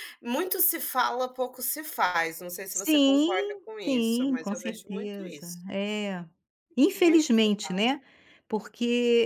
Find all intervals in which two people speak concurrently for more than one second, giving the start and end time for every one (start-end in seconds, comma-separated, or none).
2.7-5.6